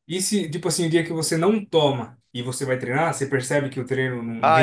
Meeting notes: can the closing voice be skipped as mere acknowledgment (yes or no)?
no